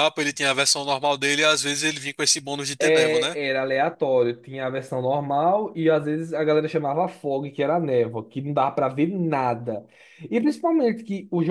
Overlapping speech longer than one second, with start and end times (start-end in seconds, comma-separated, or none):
none